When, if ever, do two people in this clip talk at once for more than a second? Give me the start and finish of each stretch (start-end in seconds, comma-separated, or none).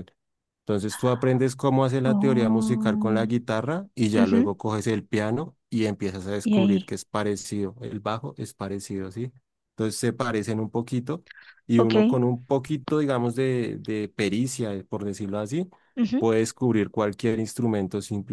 2.0-3.3